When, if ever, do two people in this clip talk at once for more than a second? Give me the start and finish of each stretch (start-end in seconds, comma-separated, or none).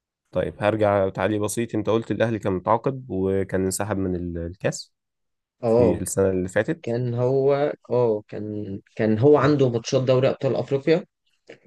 none